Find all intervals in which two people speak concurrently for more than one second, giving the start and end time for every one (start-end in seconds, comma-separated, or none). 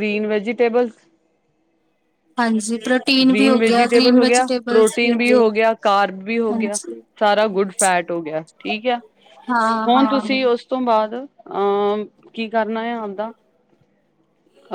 3.3-5.4